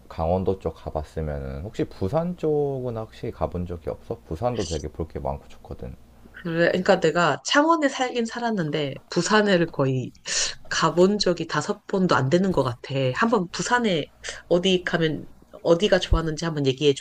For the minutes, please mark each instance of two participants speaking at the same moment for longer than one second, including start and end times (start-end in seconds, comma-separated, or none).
none